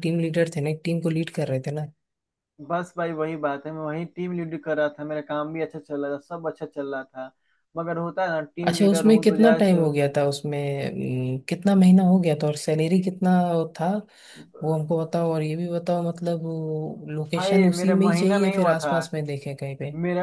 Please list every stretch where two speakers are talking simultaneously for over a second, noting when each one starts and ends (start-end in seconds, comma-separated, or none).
8.7-9.9, 17.3-18.9